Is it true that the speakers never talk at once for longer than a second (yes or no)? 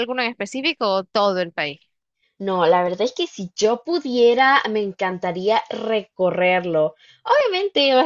yes